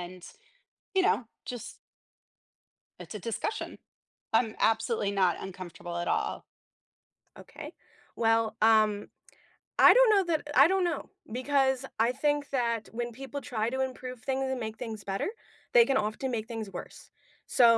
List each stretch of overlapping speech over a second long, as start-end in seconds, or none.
none